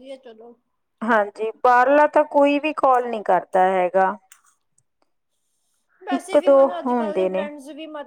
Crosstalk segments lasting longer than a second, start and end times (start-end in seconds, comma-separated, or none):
6.1-7.4